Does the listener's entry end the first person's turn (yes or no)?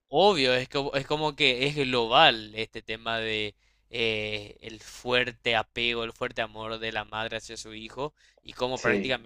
no